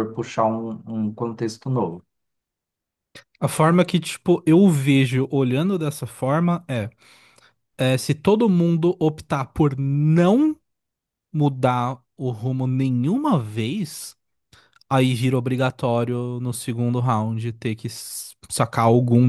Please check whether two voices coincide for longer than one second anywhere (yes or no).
no